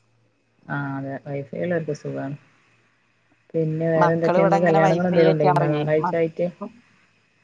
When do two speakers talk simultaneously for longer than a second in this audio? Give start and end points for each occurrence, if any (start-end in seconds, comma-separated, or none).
4.0-5.8